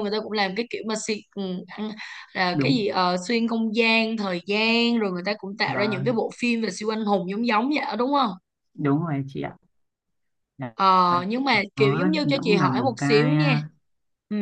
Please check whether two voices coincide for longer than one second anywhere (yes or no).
yes